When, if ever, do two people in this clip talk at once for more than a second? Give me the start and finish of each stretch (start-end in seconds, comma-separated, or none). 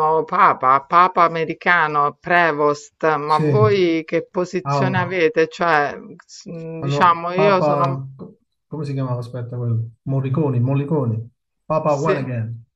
6.8-8.0